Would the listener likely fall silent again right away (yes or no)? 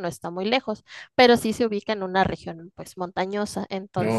yes